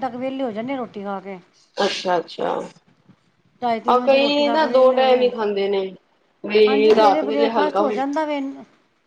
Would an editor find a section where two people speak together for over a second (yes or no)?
yes